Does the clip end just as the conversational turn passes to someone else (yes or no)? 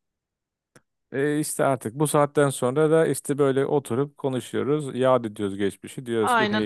yes